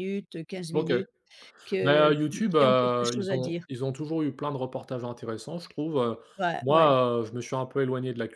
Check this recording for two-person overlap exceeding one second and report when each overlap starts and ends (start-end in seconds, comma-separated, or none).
1.8-3.6